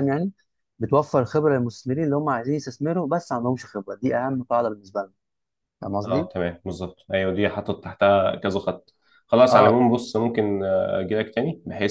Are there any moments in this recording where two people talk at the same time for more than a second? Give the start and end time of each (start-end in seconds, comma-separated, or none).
none